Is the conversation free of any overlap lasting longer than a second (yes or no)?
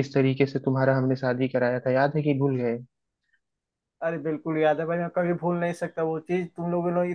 yes